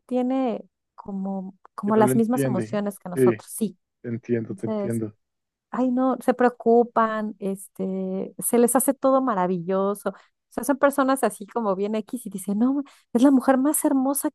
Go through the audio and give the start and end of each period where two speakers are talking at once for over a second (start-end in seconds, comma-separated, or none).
1.8-3.3